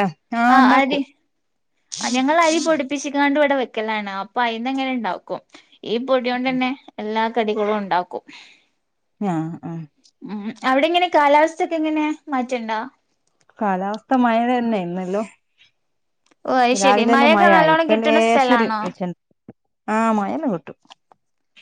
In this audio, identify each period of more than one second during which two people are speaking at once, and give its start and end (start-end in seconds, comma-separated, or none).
16.8-18.8